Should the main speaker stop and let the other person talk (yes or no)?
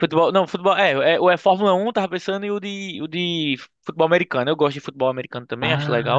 yes